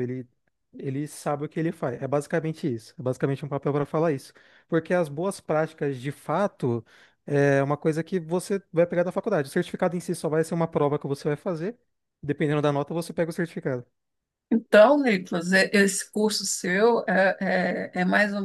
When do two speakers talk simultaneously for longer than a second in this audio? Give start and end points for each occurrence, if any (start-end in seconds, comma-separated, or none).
none